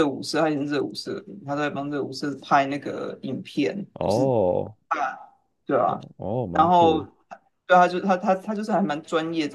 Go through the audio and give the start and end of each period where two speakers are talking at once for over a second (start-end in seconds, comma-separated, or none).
none